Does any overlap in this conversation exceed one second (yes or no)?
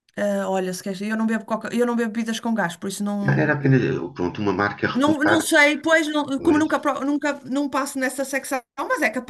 no